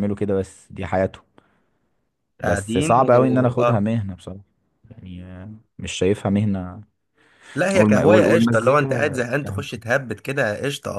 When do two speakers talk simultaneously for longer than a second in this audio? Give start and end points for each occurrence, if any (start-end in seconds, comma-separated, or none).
2.4-3.9, 7.7-9.6